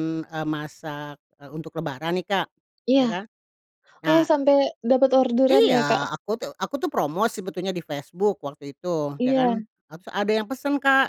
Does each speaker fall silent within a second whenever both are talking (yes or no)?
yes